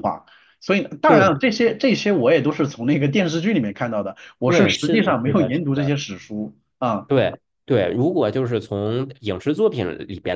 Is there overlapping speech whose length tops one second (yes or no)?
yes